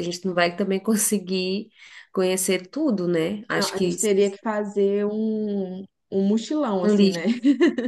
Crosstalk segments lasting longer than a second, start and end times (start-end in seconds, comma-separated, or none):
none